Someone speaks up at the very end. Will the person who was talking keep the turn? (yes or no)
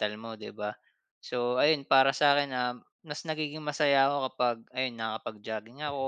yes